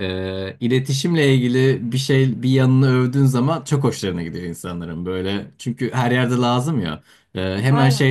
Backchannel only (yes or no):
yes